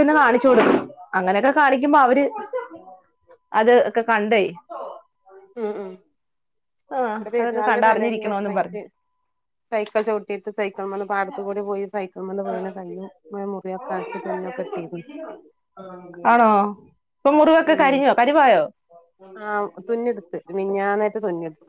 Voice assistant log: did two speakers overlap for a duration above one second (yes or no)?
yes